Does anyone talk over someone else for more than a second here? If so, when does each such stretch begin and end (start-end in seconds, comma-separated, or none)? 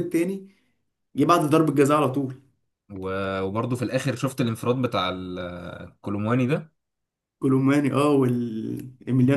none